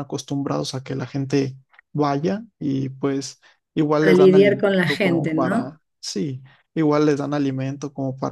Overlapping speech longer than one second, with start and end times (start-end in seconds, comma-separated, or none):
4.0-5.7